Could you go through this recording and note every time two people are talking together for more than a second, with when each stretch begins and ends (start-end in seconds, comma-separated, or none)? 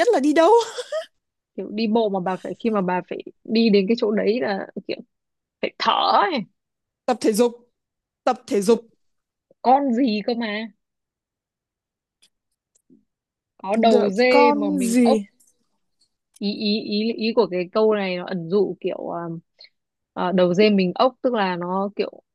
13.9-15.2